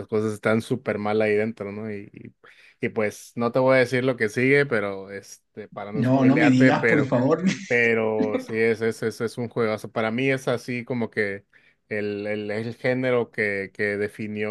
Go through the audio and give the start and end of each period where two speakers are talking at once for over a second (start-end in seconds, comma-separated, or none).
5.9-7.1